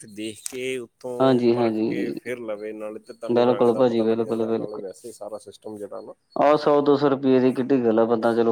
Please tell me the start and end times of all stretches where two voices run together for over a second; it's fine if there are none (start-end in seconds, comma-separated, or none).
3.4-4.8